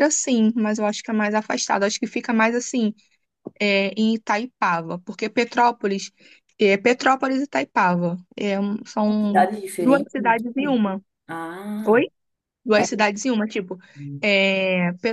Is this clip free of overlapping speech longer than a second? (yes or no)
no